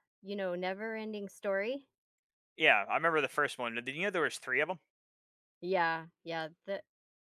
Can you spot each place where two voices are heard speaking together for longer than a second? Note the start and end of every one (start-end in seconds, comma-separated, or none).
none